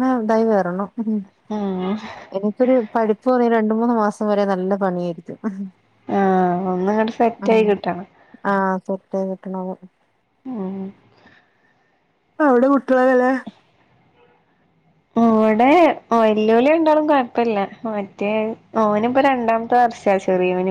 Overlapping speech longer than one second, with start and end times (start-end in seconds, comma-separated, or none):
none